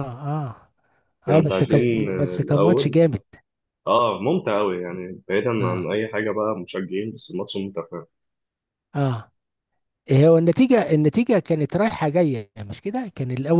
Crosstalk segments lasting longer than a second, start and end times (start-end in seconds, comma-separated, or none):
1.3-3.0